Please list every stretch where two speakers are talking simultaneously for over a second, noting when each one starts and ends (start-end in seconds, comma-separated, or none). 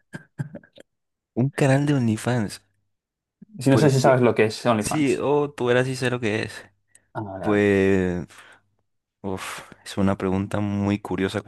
none